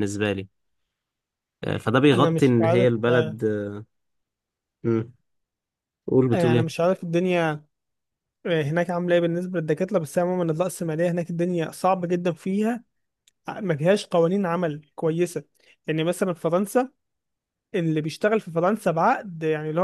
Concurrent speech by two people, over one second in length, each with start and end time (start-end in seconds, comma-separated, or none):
2.1-3.4